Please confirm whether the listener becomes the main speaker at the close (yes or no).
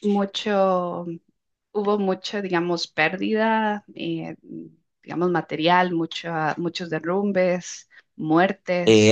yes